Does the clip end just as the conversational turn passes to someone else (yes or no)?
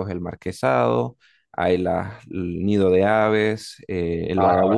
no